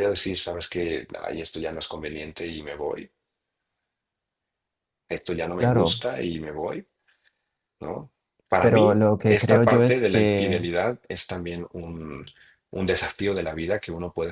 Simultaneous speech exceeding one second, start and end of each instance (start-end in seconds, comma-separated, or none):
8.6-10.7